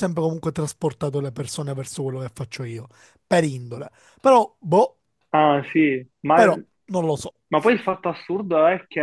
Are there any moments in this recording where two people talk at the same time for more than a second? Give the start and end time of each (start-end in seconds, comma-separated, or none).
none